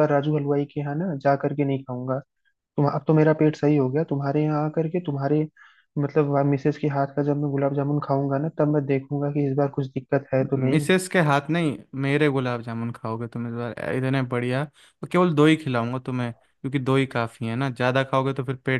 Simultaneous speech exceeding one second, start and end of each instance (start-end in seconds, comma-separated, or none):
none